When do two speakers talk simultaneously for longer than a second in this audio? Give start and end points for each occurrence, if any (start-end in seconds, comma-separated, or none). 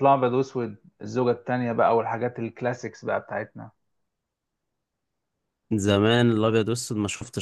none